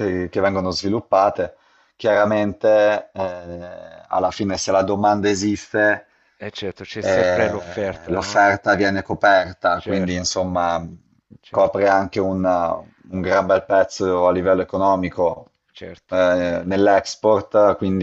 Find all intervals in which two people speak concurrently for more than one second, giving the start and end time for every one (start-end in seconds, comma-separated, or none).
7.0-8.5